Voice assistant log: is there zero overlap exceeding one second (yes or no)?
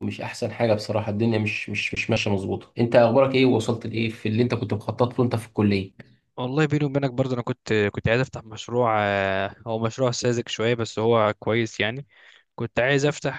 yes